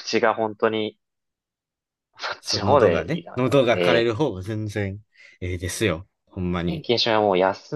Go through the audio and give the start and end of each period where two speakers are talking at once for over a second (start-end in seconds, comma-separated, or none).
2.4-4.1